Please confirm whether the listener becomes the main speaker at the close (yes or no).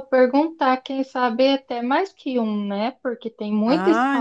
yes